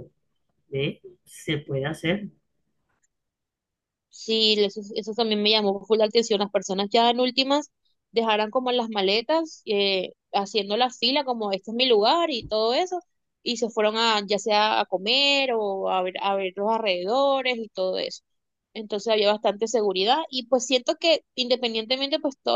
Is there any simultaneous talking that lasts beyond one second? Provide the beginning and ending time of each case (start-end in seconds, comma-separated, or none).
none